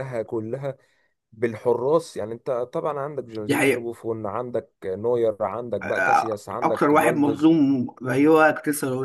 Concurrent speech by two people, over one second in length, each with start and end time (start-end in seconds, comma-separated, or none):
5.8-7.5